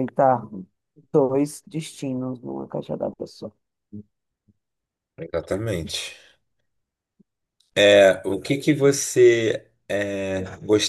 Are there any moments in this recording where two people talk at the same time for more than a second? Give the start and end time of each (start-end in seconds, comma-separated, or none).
none